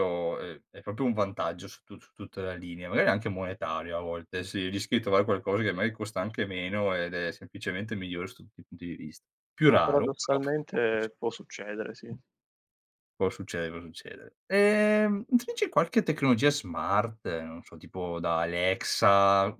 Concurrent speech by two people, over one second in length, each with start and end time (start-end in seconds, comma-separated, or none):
9.7-11.1